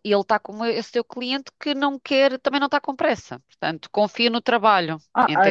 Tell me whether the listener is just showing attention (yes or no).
no